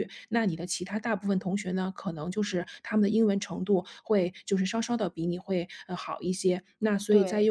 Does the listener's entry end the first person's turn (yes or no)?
no